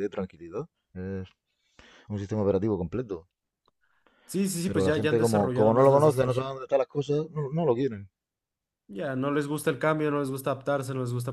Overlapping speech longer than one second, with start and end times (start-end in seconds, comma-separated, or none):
4.7-6.5